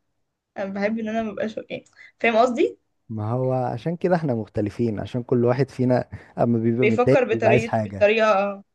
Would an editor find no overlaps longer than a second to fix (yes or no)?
no